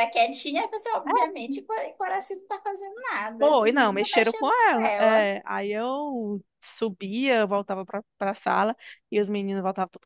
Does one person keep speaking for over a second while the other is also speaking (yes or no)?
yes